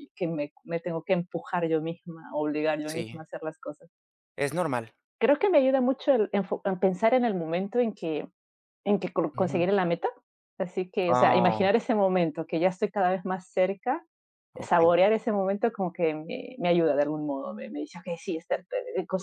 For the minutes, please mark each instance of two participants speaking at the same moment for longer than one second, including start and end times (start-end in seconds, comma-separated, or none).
none